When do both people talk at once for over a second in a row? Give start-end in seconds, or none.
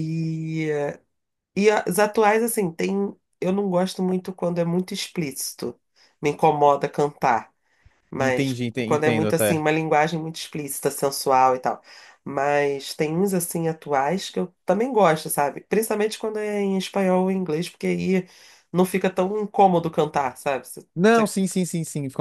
8.2-9.6